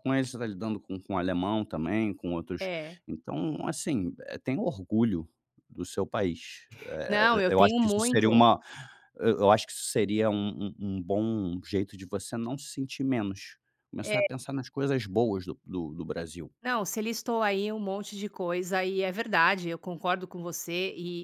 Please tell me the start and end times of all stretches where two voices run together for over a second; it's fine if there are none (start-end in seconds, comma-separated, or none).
7.1-8.4